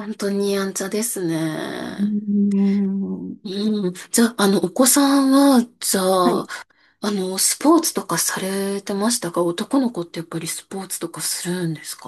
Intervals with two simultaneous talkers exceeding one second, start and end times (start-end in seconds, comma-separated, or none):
none